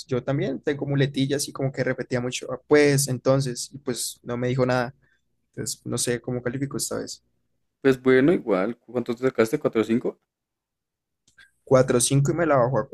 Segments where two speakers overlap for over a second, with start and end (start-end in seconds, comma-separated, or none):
none